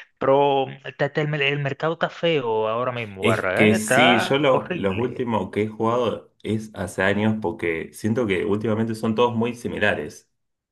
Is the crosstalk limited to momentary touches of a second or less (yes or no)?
no